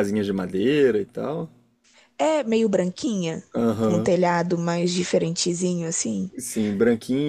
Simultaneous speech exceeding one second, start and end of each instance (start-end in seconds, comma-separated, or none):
none